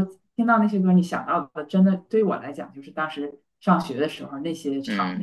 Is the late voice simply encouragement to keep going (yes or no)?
no